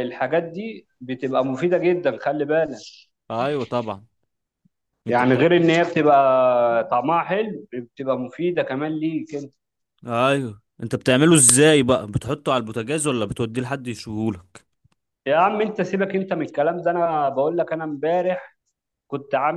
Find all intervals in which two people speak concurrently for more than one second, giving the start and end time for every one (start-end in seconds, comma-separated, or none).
none